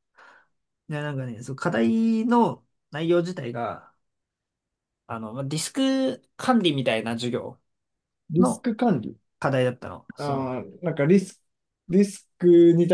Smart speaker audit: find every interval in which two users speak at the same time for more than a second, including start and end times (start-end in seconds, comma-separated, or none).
none